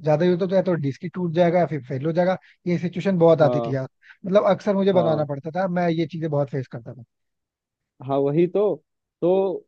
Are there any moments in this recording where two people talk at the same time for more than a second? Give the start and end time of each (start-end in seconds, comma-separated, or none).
none